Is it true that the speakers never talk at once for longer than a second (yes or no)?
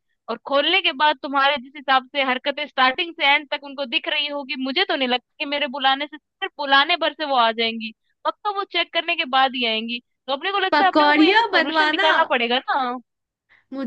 no